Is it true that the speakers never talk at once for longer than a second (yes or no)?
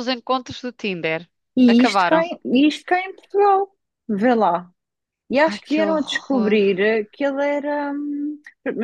no